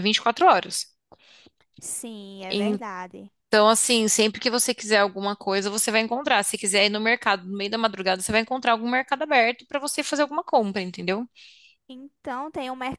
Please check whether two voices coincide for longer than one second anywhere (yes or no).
no